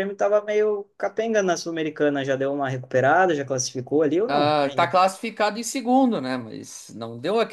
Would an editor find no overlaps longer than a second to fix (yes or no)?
yes